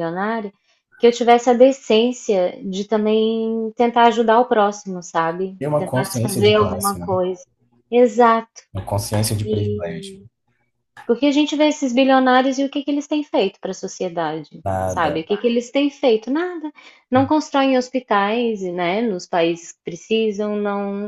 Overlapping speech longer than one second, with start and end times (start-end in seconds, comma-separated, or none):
5.6-7.2